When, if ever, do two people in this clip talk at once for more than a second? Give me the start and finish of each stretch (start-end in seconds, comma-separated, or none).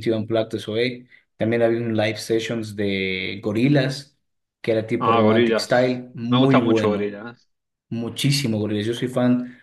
5.0-7.2